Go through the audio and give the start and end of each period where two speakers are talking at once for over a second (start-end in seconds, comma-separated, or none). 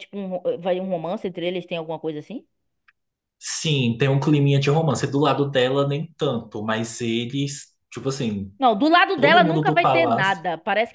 9.1-10.4